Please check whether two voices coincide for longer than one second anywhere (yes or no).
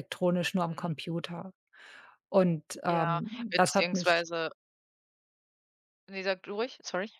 yes